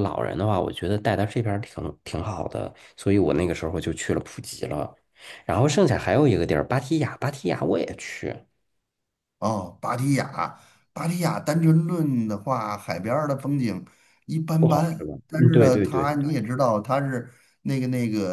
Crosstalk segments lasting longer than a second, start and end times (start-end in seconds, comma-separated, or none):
14.6-16.1